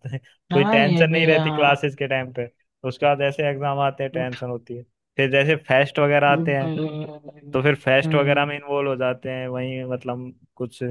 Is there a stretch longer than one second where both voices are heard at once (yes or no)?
yes